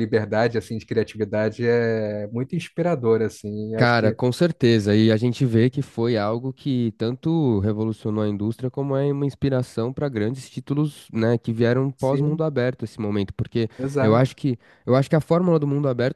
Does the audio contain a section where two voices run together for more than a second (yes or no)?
no